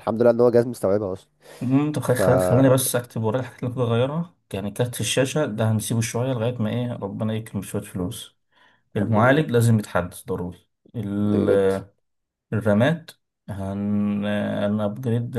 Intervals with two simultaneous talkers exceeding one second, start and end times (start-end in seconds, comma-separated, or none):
none